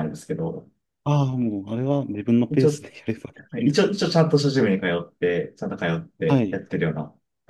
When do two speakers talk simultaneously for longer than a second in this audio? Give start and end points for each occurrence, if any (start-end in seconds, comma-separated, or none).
none